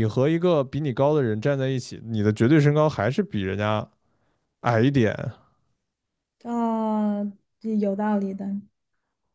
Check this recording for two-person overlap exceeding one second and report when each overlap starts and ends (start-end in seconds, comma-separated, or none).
none